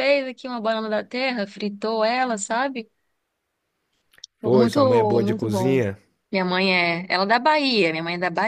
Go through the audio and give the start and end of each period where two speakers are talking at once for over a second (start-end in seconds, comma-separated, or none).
4.4-5.8